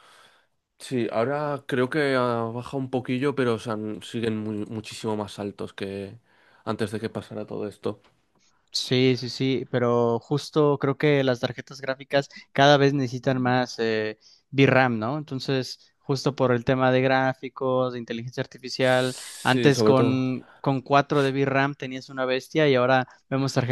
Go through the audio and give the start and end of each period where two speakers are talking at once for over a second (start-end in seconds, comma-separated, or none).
18.8-20.2